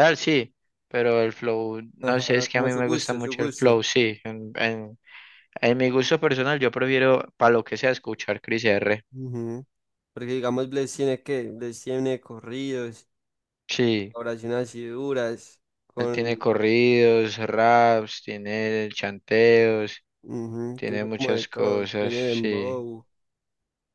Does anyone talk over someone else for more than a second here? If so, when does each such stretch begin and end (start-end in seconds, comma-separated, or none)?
2.0-3.8, 20.7-22.8